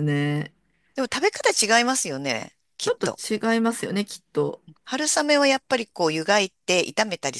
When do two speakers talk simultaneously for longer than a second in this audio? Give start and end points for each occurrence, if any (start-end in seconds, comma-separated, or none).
none